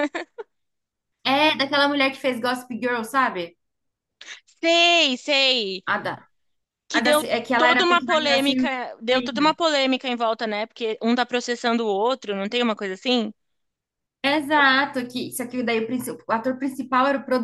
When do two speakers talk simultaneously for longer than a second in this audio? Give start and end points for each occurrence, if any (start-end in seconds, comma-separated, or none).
6.9-9.6